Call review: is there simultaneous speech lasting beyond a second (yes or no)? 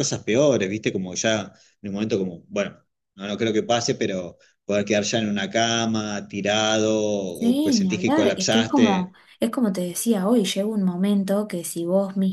yes